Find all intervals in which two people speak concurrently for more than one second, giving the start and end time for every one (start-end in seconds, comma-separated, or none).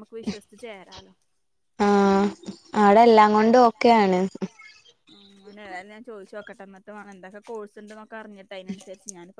none